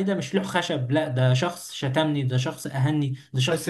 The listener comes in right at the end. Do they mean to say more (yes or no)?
yes